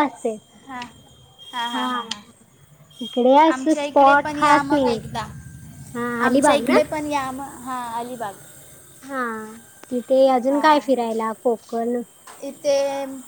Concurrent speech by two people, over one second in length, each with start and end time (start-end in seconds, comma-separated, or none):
3.5-5.0